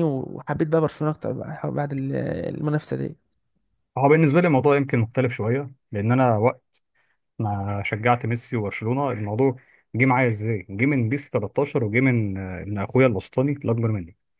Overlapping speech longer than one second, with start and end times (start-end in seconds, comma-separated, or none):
none